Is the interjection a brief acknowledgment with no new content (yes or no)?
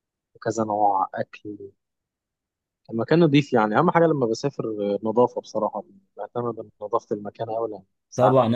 no